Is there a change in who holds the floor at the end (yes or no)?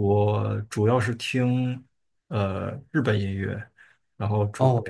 no